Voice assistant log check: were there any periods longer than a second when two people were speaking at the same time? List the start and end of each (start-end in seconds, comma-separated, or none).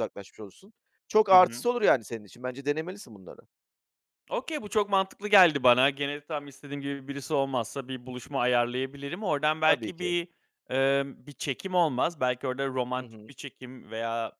none